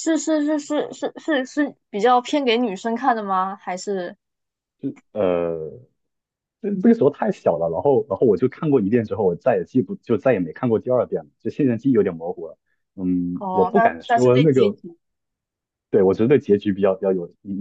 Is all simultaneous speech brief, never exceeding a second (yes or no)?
no